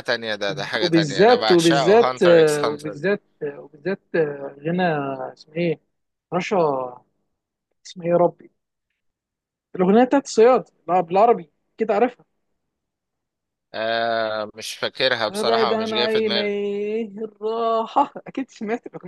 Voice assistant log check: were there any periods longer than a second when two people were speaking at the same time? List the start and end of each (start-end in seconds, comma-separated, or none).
0.8-3.0, 15.3-16.6